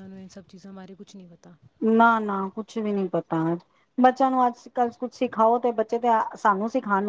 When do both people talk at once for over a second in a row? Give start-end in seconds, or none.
none